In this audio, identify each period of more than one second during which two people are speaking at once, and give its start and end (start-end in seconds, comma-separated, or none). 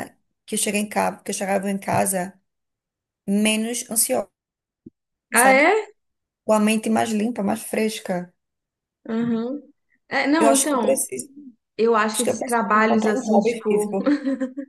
12.1-13.9